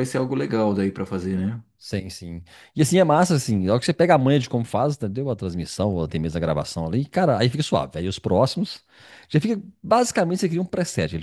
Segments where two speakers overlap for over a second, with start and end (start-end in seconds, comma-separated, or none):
none